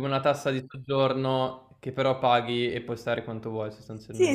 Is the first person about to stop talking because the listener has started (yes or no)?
yes